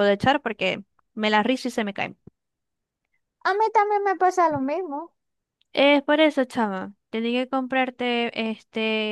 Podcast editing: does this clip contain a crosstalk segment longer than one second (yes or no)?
no